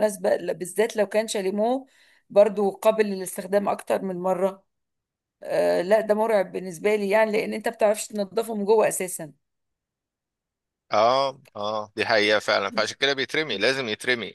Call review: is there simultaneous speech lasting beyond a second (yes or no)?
no